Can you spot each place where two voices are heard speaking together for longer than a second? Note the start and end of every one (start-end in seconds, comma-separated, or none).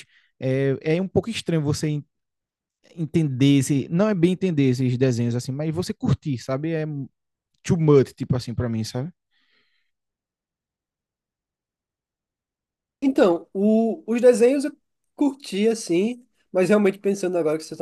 none